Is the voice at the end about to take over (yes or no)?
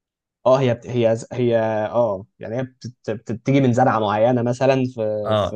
yes